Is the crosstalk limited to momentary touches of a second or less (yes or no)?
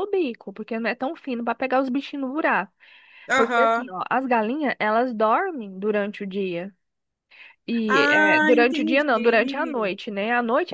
no